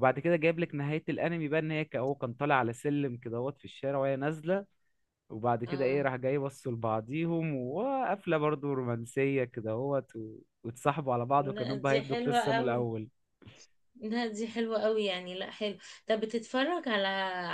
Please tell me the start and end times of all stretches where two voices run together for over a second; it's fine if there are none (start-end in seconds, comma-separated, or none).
11.4-12.9